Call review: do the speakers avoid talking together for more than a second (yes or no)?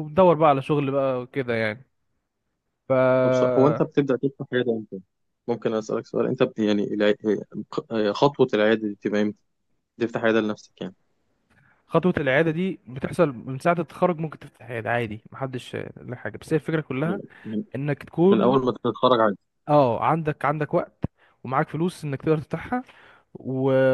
yes